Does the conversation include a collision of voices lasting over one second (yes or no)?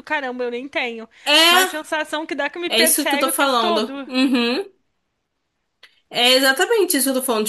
yes